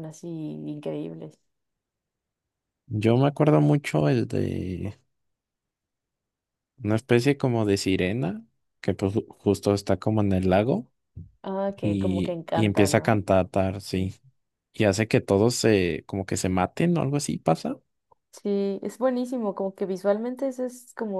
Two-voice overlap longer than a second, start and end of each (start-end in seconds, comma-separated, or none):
11.8-13.2